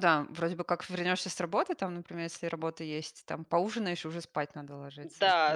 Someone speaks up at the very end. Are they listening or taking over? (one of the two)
taking over